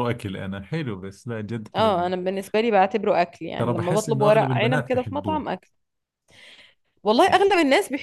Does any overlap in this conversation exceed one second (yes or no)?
yes